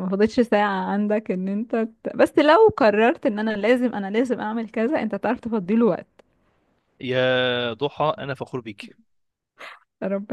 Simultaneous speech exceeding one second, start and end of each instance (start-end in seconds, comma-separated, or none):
none